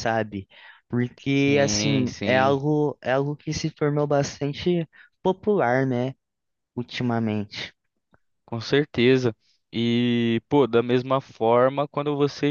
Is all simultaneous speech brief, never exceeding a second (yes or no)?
no